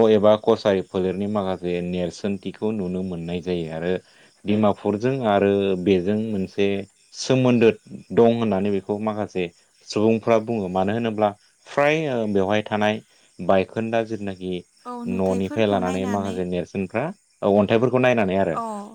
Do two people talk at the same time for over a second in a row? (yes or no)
yes